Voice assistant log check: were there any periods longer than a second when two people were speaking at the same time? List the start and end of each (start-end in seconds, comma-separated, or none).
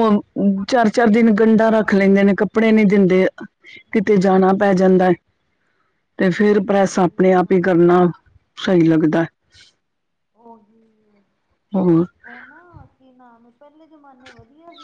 none